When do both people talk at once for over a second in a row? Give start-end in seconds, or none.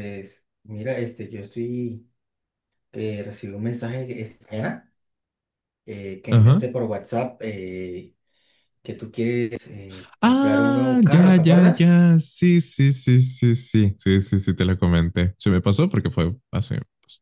10.2-12.1